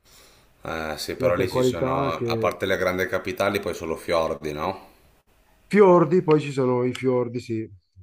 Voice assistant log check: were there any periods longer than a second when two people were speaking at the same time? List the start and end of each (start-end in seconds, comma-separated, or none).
1.2-2.6